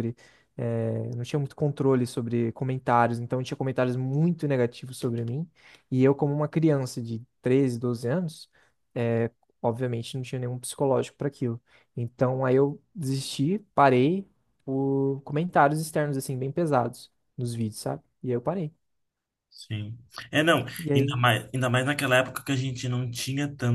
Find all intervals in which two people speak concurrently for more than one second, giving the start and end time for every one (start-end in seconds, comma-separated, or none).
none